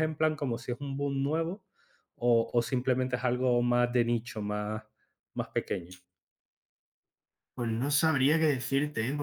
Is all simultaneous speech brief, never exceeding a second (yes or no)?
yes